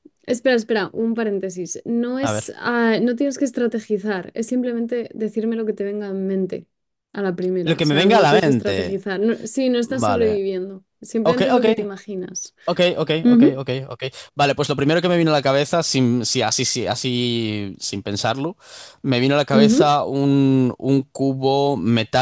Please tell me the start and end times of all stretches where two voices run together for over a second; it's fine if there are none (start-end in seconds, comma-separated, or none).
7.6-9.0